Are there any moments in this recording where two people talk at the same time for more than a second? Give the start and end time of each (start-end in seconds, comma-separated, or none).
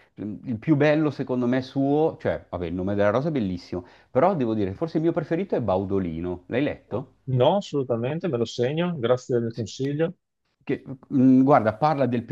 none